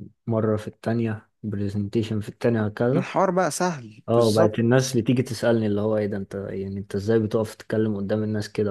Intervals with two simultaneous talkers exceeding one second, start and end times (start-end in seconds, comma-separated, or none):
none